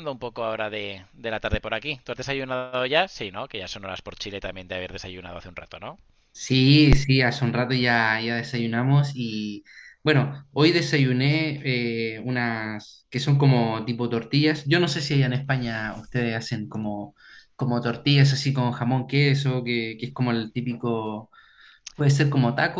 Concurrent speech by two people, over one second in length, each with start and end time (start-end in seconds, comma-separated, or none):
none